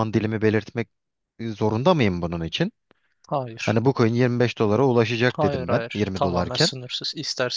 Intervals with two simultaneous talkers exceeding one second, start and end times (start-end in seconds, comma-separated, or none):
5.3-6.7